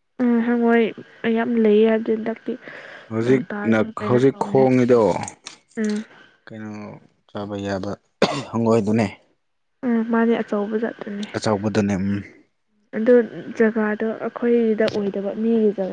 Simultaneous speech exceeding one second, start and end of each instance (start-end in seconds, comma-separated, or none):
3.2-4.9